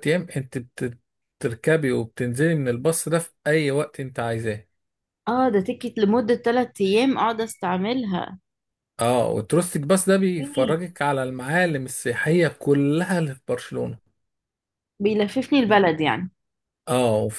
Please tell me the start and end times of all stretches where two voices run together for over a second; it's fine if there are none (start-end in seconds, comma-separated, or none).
none